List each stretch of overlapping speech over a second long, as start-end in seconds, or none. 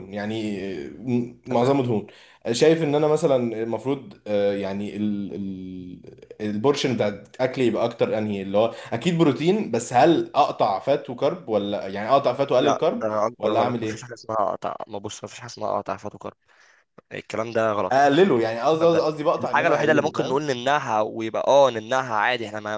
12.6-14.2, 18.8-20.4